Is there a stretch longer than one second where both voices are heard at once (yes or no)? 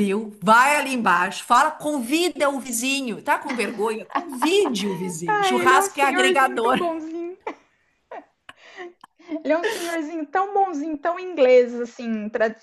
yes